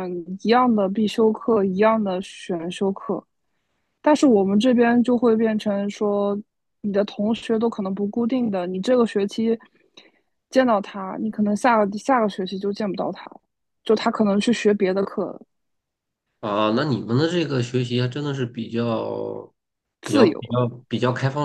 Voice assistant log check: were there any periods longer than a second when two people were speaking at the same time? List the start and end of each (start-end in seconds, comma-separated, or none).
none